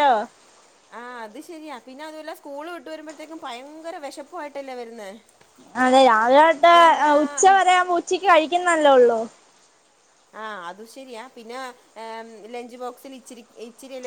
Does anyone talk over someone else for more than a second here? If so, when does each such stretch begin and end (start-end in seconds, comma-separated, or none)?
none